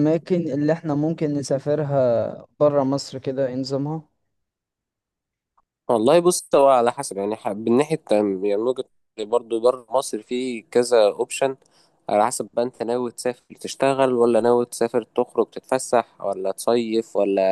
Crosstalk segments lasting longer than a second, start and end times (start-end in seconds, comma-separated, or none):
none